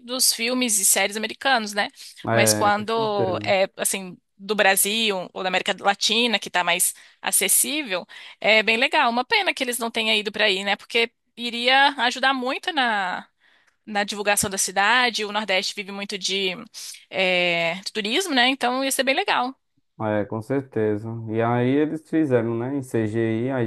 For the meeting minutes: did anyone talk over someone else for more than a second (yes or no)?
yes